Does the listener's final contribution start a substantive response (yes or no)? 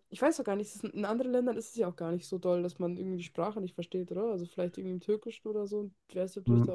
yes